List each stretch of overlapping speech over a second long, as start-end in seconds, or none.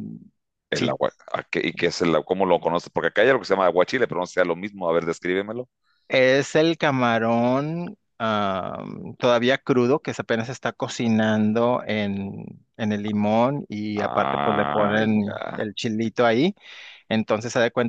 13.9-15.7